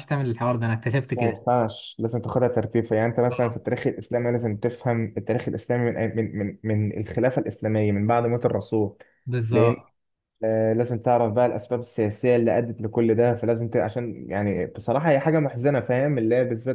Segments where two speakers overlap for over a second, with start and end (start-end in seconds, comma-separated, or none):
none